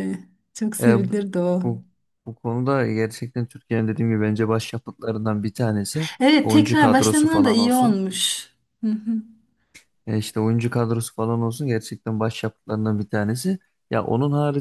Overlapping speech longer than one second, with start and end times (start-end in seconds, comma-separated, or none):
6.2-8.0